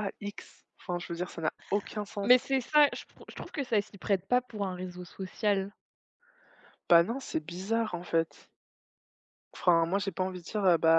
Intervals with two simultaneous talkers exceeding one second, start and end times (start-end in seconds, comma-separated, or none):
none